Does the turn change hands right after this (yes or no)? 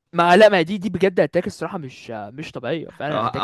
yes